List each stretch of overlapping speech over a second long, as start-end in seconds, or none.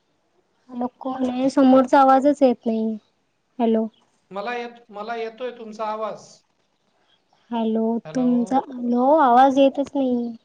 none